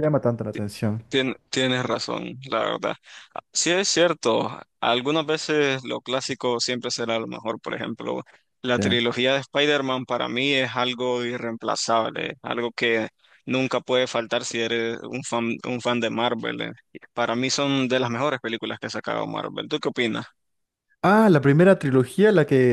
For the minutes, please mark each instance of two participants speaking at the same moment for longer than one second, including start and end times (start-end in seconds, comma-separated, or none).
none